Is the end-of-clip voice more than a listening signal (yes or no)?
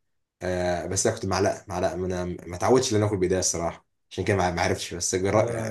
yes